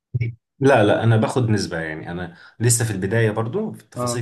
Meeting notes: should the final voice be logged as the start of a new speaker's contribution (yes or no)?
no